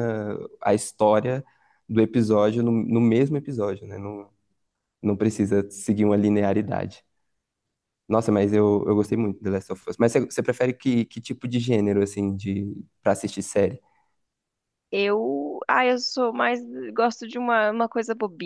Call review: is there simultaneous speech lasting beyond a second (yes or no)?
no